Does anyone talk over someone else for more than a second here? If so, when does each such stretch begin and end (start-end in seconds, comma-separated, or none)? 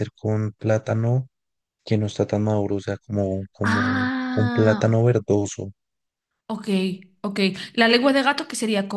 3.6-5.0